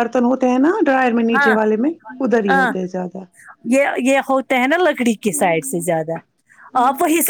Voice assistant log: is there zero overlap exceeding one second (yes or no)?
yes